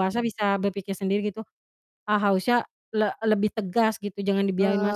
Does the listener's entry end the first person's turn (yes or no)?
yes